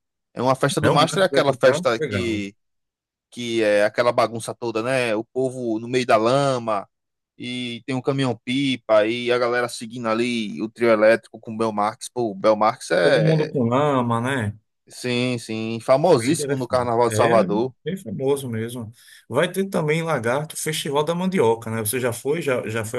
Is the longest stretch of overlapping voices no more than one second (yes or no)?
no